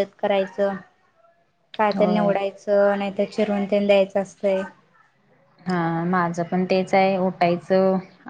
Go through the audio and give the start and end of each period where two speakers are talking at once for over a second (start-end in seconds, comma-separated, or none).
none